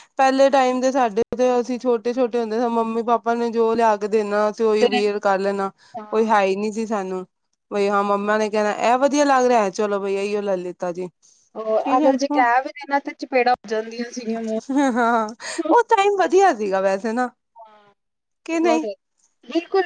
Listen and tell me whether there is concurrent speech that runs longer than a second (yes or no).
no